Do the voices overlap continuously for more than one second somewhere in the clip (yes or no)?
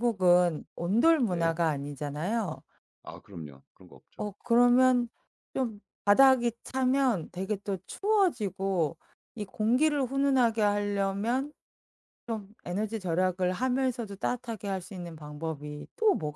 no